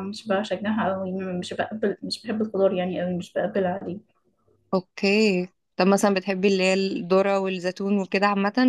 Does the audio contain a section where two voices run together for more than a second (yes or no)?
no